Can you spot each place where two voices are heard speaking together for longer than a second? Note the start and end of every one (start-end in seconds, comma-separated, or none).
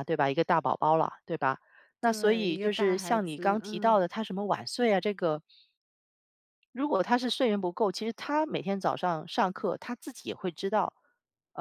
2.0-4.0